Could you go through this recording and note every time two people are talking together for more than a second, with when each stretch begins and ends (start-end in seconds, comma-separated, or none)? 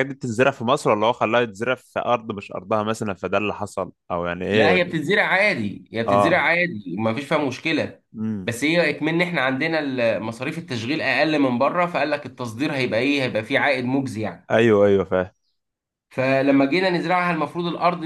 none